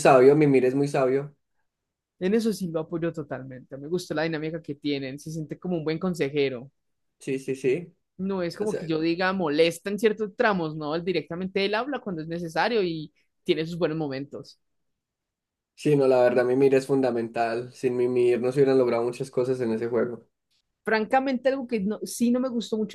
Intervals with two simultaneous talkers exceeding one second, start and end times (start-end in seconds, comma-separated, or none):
none